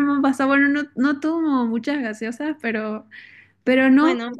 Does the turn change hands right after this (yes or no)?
no